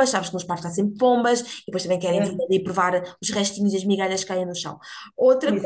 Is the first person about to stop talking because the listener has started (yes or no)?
yes